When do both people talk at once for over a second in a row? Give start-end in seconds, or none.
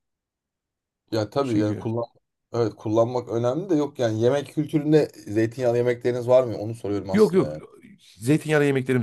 none